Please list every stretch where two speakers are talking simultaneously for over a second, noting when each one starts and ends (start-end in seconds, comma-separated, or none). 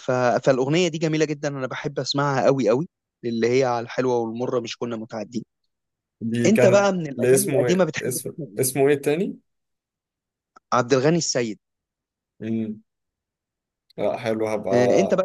6.5-8.8